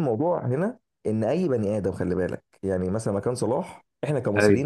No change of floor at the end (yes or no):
yes